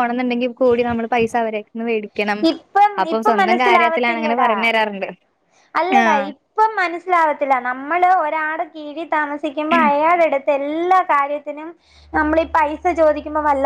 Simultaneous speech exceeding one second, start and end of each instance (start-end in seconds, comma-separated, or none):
3.0-4.5